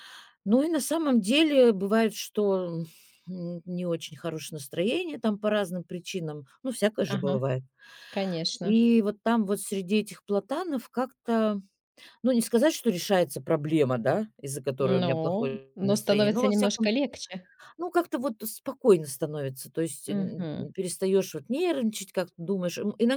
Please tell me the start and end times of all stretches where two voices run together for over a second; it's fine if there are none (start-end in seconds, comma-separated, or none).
14.8-16.9